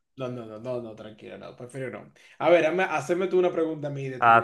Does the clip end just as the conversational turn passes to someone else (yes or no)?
yes